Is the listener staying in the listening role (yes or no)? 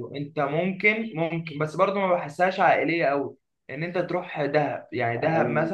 yes